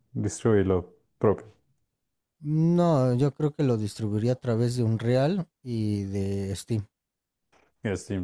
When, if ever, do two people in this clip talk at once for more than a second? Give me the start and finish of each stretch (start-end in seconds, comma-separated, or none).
none